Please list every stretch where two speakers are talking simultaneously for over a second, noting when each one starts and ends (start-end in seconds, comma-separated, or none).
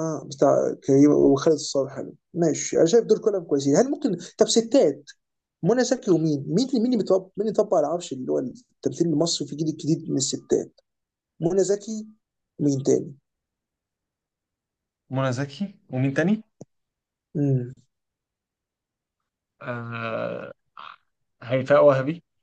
none